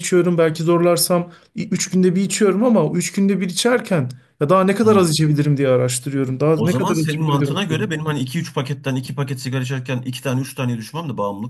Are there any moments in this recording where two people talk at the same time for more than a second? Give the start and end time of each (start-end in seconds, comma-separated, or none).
6.5-8.0